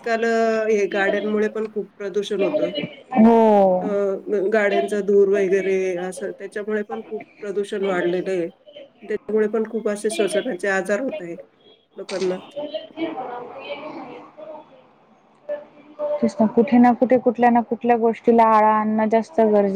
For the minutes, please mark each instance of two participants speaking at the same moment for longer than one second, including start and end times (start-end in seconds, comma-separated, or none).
none